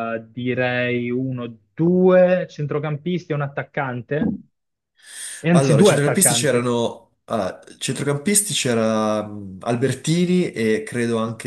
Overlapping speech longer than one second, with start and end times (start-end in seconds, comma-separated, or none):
5.5-6.7